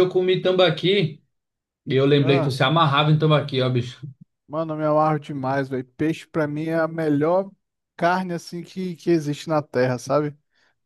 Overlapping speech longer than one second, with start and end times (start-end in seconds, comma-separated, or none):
none